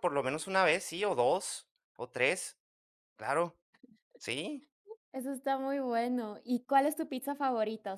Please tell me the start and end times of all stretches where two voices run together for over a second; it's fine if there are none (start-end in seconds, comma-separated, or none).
none